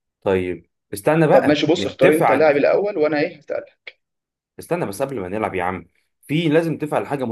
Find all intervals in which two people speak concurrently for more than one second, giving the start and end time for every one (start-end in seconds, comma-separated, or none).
1.3-2.6